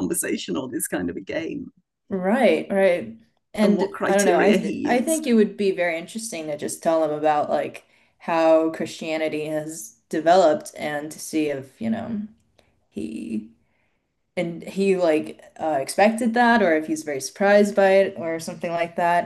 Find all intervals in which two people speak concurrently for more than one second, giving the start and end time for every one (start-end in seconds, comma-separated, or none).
3.6-5.3